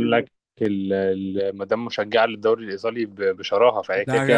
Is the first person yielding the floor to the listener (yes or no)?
yes